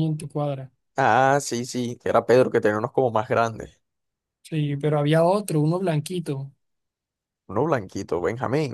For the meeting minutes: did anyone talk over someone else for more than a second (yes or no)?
no